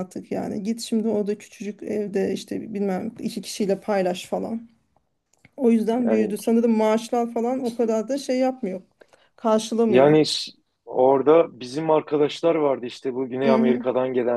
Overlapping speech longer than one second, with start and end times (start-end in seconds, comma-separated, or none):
none